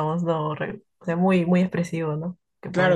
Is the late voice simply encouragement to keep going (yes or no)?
no